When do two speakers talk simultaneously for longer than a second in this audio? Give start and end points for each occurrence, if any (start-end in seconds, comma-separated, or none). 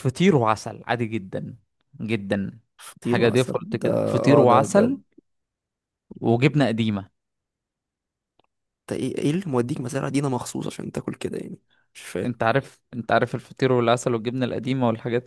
3.0-5.0